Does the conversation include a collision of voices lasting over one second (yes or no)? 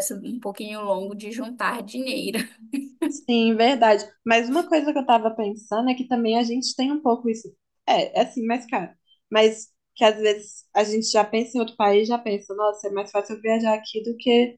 no